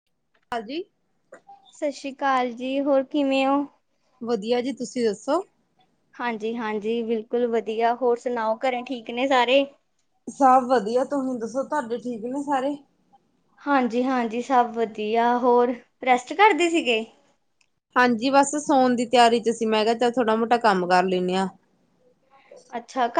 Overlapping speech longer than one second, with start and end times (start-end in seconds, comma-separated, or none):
none